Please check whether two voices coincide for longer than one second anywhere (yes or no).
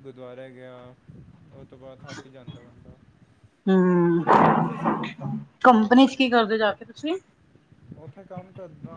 no